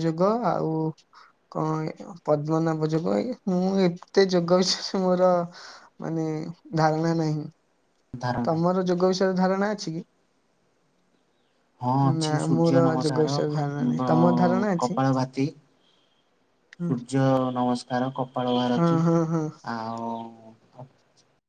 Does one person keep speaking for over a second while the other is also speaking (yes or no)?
yes